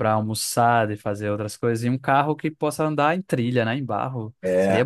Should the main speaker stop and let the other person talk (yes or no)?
yes